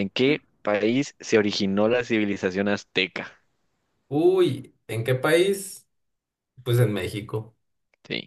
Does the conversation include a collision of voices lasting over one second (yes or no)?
no